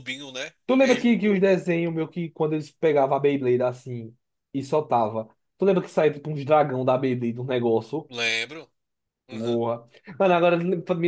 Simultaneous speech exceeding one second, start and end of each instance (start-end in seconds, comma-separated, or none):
none